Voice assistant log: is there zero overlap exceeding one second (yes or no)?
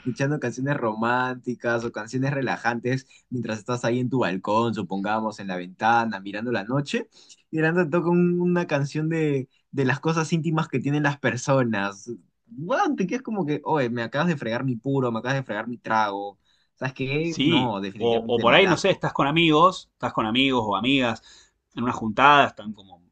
no